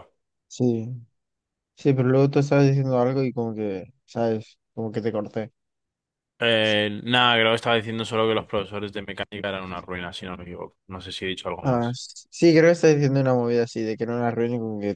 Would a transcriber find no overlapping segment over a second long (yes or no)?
yes